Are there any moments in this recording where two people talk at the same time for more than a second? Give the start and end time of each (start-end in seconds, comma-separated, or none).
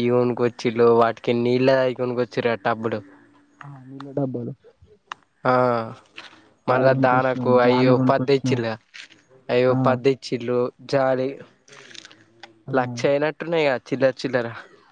6.7-8.6